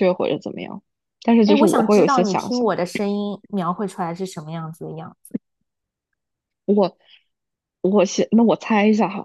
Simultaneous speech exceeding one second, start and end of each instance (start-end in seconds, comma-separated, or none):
1.4-2.7